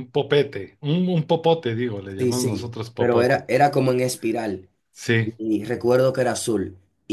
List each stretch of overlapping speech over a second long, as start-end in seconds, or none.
2.2-3.5